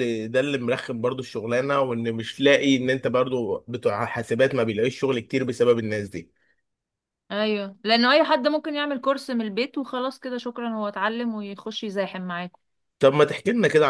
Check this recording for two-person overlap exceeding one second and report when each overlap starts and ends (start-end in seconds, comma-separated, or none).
none